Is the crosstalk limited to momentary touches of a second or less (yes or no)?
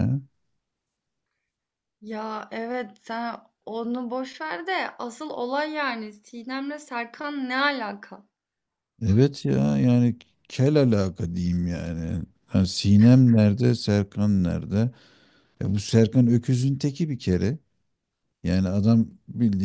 yes